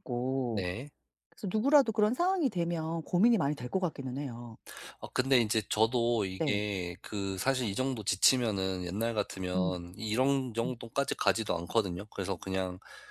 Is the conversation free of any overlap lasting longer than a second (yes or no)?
yes